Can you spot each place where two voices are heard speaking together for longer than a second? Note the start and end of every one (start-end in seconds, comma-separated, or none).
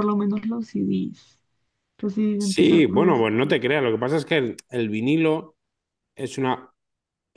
2.4-3.6